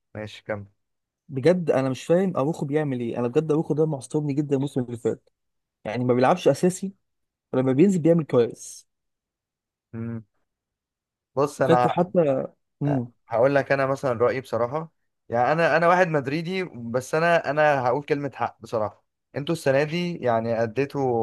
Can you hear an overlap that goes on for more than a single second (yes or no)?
no